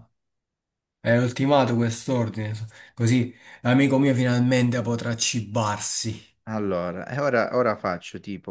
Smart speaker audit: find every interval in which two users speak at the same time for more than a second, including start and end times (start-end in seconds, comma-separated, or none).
none